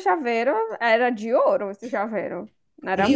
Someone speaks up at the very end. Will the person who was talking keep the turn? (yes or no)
no